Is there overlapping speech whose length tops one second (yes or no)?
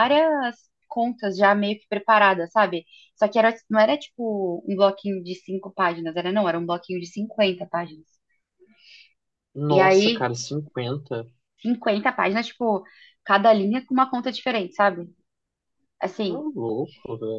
no